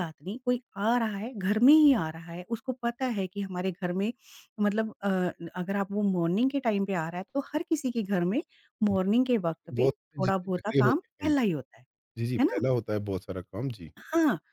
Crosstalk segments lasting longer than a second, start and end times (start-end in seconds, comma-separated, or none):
9.8-11.3